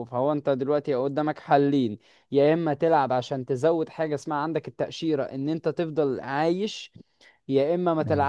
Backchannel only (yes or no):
yes